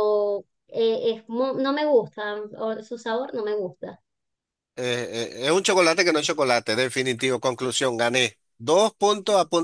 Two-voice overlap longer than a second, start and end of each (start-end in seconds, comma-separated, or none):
none